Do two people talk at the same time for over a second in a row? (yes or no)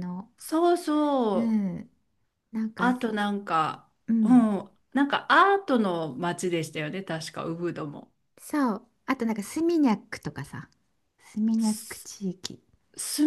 no